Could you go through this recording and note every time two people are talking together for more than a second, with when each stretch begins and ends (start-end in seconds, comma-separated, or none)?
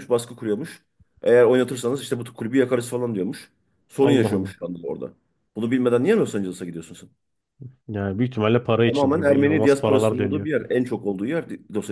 8.8-10.5